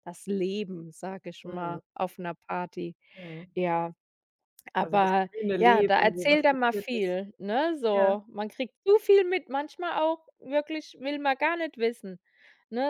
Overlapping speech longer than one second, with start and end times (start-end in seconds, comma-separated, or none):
4.8-7.1